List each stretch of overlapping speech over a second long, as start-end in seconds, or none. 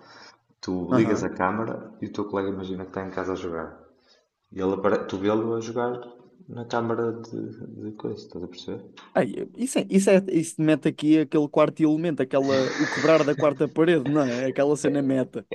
none